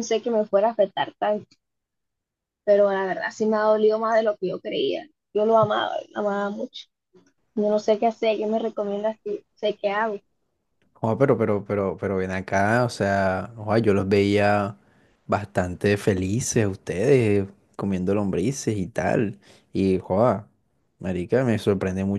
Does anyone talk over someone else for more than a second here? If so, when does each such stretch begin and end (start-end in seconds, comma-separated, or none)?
none